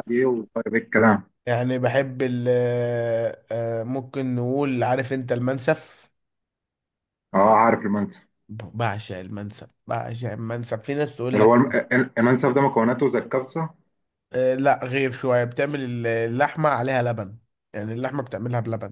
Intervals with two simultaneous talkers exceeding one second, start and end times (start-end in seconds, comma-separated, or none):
none